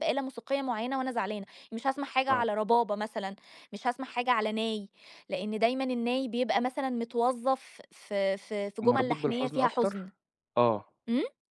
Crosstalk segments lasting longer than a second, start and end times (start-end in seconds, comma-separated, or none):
8.8-10.1